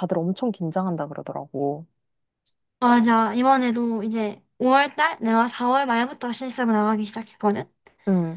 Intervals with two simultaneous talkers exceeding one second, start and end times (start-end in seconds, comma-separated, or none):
none